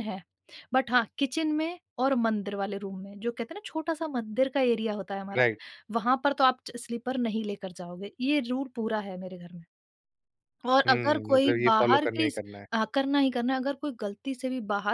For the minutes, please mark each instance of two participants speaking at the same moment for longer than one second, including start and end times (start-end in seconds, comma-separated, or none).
10.9-12.7